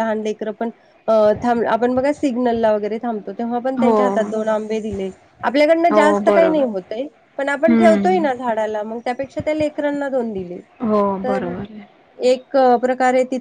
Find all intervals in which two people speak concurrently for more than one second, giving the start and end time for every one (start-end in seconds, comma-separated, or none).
none